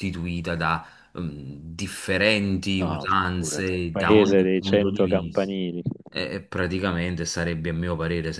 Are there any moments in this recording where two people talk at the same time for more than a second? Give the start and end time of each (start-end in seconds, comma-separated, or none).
2.8-5.5